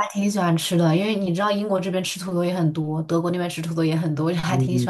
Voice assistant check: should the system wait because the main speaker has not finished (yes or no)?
no